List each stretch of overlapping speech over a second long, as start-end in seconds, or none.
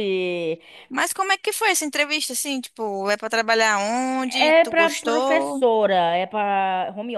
4.4-5.6